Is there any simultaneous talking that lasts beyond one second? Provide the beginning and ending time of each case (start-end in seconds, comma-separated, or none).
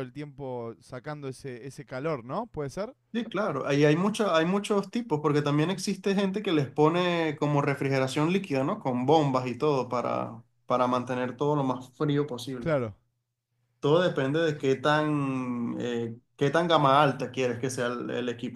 none